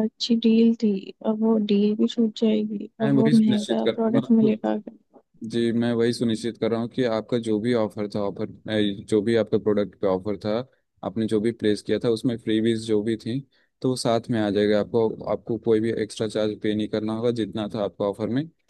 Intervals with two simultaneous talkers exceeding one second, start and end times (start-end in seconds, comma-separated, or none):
3.0-4.5